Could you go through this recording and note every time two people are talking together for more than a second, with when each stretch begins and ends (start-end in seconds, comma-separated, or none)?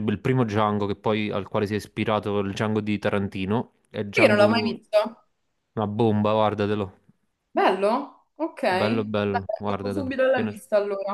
8.7-10.5